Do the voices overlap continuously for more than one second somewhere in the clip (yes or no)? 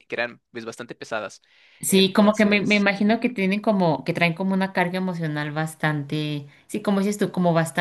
yes